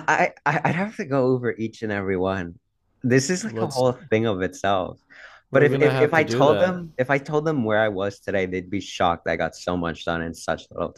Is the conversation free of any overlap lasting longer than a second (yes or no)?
no